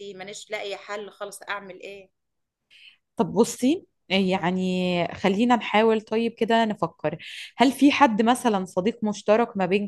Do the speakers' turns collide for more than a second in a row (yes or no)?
no